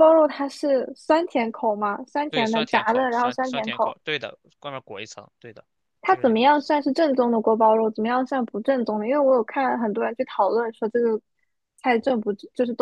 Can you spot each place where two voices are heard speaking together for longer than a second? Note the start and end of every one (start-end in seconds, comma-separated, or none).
2.3-4.0